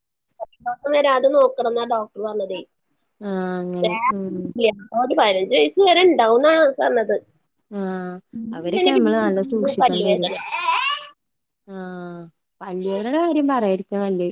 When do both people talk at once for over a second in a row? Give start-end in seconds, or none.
8.8-10.3